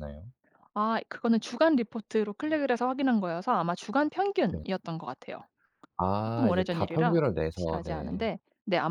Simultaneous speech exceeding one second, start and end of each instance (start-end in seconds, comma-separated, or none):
6.2-8.2